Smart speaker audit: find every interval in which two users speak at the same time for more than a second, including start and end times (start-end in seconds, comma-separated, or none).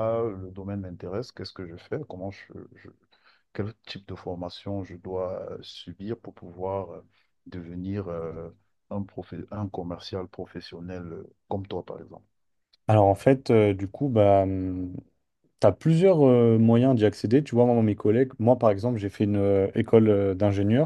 none